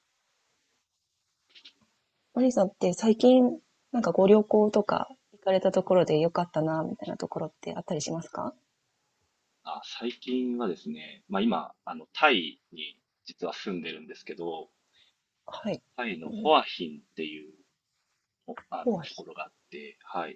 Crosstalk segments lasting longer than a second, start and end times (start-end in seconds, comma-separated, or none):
none